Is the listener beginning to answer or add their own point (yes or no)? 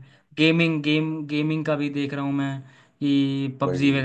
no